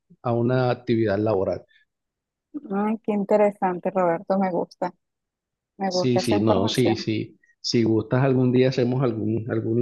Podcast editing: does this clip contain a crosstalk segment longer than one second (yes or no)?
yes